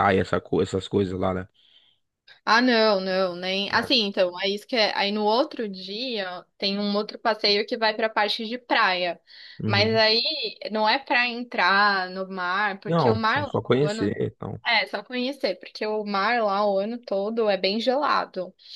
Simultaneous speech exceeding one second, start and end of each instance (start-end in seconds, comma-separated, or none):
12.8-14.1